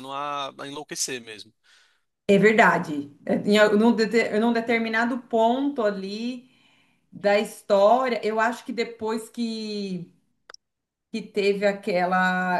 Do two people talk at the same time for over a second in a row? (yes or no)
no